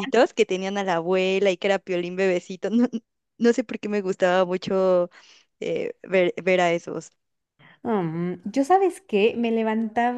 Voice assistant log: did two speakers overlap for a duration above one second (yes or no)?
no